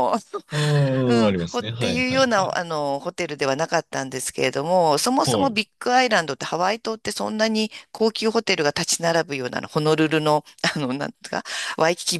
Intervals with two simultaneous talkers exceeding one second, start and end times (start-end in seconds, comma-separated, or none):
1.1-2.6